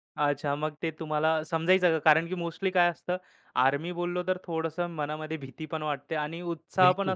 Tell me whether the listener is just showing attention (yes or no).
yes